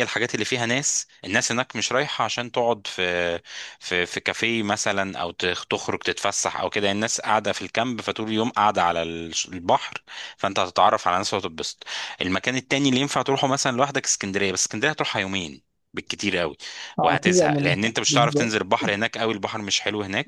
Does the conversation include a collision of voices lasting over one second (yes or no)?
yes